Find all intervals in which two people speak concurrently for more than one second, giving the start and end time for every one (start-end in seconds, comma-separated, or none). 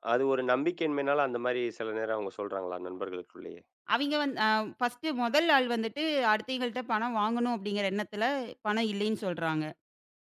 none